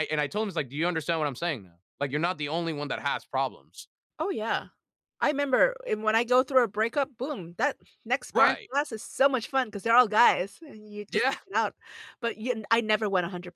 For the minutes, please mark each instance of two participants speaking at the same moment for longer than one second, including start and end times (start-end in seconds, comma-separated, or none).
none